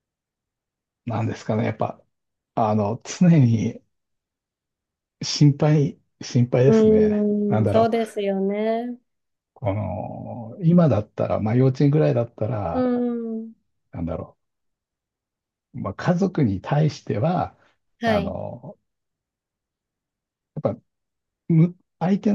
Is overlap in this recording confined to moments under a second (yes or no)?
no